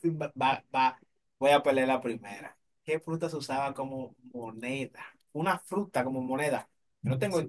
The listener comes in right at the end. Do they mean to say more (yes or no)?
no